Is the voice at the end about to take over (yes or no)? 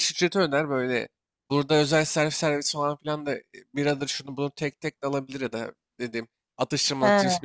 no